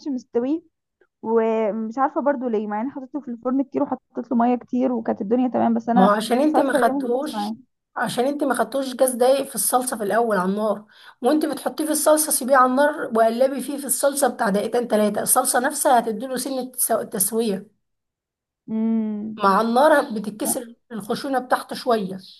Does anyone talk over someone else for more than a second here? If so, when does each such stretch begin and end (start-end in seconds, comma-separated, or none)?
5.9-7.5